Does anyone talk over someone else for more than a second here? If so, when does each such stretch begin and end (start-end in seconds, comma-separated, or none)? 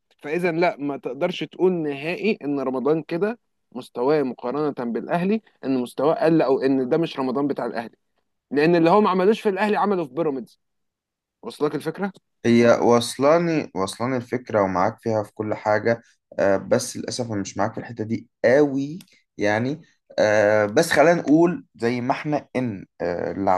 none